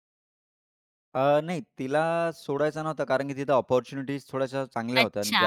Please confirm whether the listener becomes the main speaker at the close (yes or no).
yes